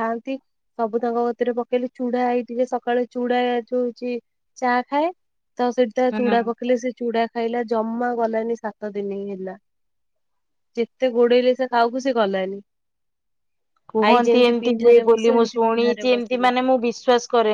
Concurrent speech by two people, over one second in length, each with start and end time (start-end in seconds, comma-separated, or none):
14.1-16.5